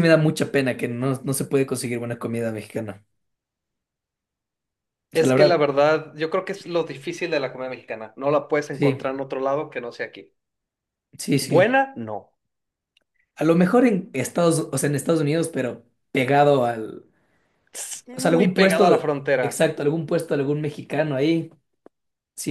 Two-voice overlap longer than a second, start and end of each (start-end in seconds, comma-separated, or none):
18.1-19.7